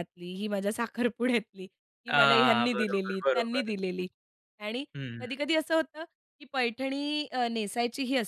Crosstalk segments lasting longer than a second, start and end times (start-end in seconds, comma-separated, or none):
2.1-3.7